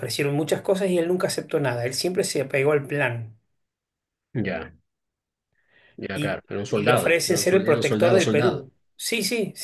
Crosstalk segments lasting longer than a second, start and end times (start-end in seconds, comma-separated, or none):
6.1-8.7